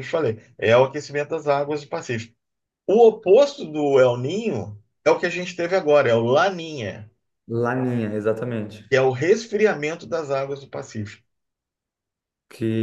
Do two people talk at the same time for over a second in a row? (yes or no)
no